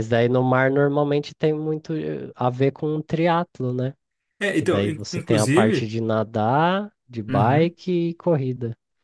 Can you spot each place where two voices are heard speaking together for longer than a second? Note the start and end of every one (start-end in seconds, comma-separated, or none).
4.5-5.9